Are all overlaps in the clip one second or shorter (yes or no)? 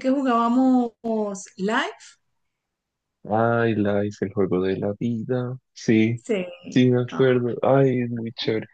yes